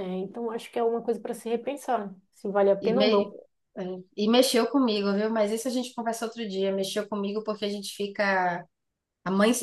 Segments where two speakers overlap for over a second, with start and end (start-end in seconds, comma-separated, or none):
none